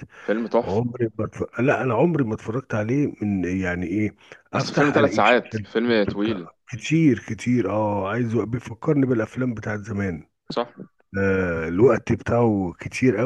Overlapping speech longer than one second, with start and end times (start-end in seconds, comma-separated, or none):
4.5-6.5